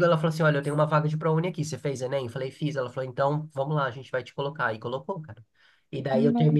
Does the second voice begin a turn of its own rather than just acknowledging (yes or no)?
no